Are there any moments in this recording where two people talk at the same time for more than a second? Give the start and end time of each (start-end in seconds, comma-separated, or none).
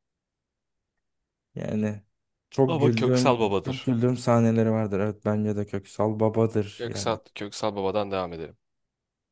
2.7-3.9